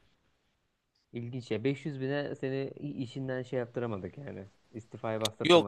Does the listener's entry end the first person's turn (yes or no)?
yes